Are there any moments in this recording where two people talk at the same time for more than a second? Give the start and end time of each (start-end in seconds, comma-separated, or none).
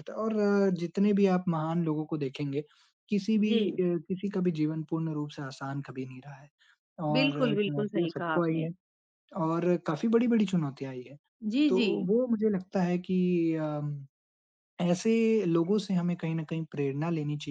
7.2-8.7